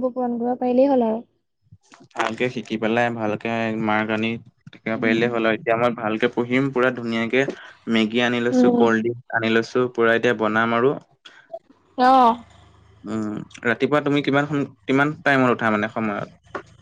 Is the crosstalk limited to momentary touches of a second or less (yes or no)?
yes